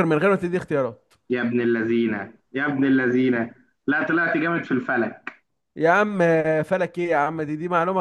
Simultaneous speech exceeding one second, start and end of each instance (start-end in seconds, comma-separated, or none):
none